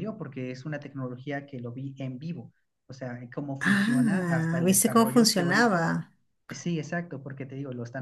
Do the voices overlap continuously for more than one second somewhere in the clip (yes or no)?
yes